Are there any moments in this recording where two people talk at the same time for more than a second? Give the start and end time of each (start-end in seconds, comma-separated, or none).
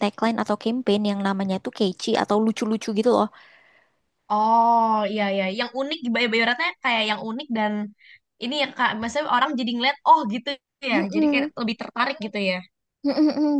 none